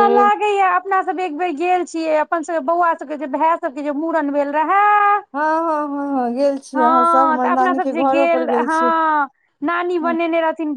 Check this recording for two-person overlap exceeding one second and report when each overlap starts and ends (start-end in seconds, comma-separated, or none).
6.8-8.8